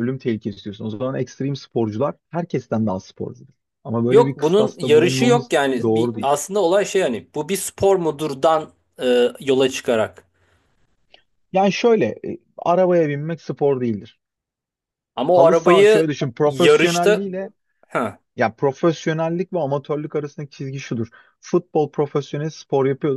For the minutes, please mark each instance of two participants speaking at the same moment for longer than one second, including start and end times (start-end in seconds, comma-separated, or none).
4.1-6.3, 15.3-17.3